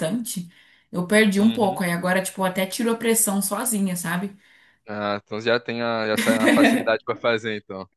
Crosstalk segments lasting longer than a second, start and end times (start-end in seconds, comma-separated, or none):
none